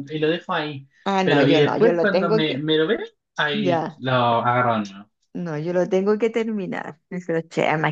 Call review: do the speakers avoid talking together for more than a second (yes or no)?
no